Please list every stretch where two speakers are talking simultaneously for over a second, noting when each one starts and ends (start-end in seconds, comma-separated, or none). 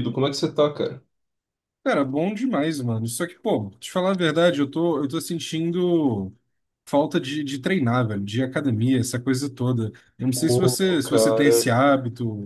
10.3-11.7